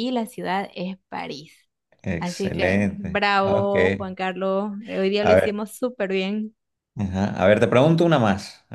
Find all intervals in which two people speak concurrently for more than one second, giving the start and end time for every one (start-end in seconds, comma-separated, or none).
2.2-3.7